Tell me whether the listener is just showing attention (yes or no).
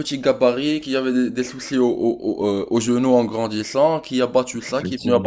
yes